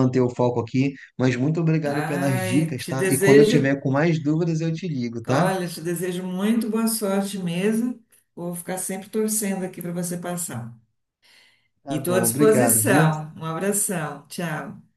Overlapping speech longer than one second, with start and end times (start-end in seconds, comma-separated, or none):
1.9-3.7, 11.9-13.1